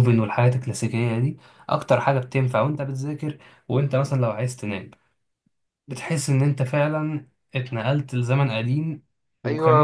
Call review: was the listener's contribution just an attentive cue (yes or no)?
no